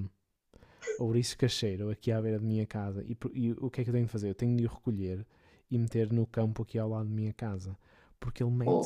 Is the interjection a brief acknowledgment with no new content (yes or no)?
yes